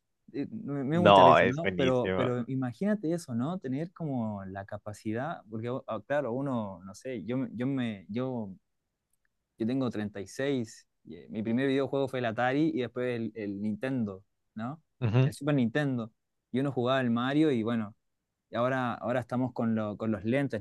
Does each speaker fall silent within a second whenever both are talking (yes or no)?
no